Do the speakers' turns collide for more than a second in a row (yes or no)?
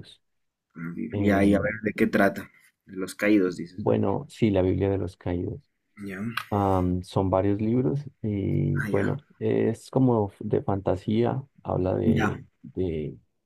no